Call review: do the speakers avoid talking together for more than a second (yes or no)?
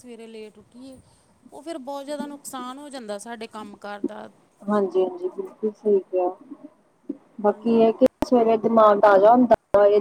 yes